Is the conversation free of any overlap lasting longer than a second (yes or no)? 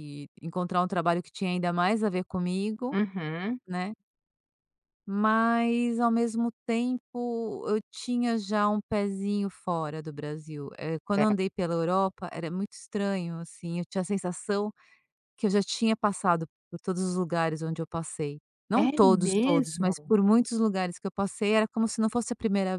no